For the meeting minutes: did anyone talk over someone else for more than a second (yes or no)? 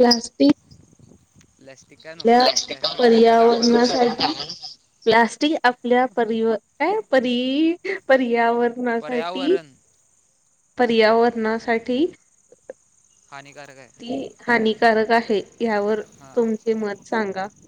yes